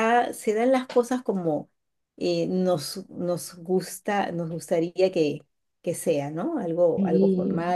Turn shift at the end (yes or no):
yes